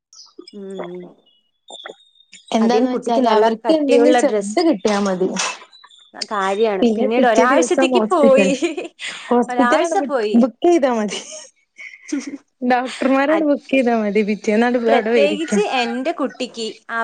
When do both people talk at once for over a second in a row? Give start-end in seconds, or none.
2.6-4.6, 6.8-8.5